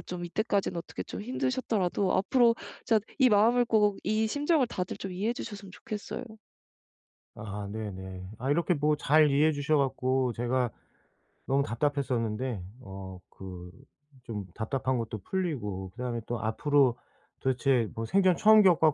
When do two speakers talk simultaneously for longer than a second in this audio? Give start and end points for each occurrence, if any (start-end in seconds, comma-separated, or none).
none